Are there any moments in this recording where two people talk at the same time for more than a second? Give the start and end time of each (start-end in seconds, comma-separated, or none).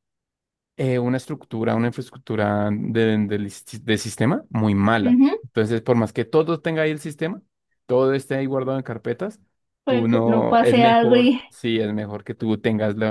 9.9-11.4